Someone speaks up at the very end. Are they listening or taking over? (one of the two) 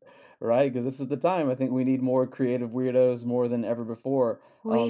listening